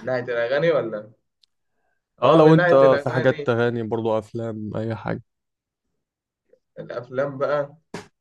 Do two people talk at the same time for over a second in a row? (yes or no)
yes